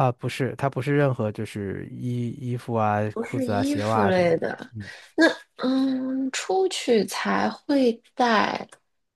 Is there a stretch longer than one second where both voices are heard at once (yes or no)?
yes